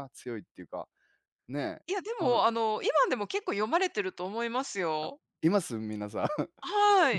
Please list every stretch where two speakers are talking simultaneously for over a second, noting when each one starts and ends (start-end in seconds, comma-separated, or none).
none